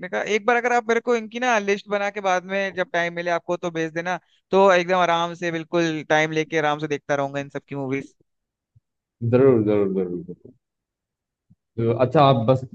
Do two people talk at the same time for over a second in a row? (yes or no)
no